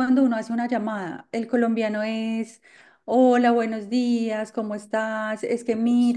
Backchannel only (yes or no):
yes